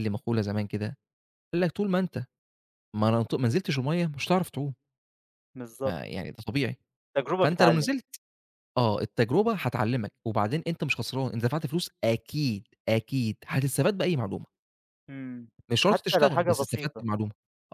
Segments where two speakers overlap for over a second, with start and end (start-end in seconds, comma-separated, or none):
15.8-17.1